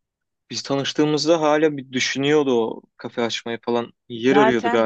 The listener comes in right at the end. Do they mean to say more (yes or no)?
yes